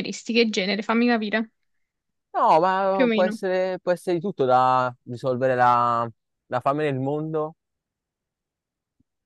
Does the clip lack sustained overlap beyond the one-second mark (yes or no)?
yes